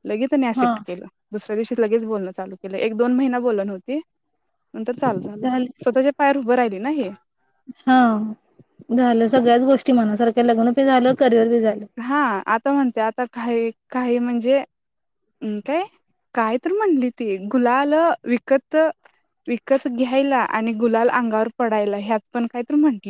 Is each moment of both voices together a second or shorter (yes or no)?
yes